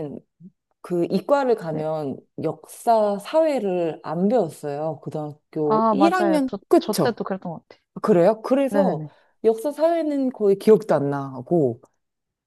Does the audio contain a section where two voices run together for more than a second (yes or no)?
yes